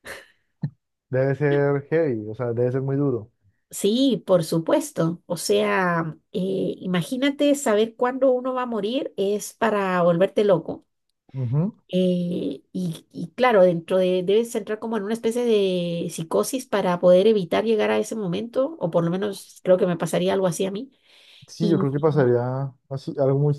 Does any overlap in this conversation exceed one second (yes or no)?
no